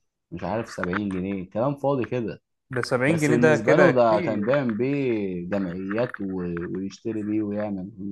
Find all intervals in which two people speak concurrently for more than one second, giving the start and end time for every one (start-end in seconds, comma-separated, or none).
3.1-4.5